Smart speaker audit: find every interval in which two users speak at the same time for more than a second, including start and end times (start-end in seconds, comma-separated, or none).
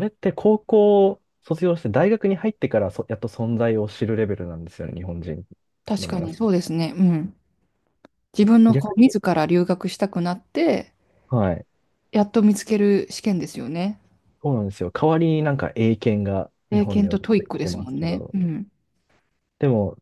16.7-18.4